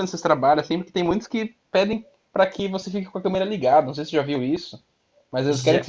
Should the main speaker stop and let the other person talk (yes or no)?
no